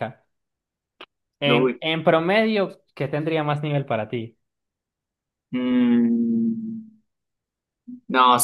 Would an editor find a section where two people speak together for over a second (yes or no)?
no